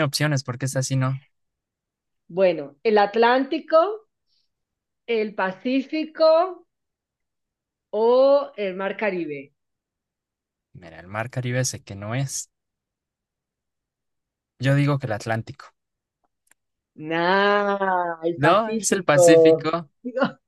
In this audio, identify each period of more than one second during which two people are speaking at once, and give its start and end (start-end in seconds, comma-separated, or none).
18.4-19.6